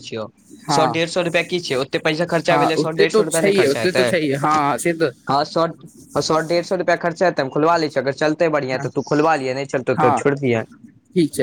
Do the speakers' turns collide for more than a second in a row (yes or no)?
yes